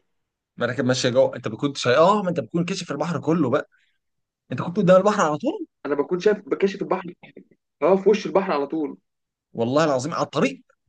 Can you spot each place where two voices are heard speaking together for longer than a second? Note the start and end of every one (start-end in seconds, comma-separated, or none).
none